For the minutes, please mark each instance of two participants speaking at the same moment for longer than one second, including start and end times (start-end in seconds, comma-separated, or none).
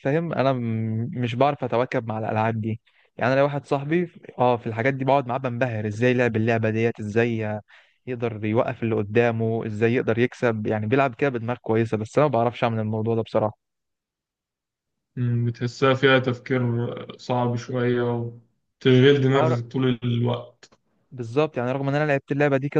none